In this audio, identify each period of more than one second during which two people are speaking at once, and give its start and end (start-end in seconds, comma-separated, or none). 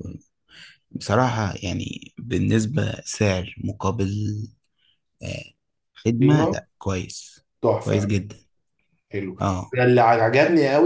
none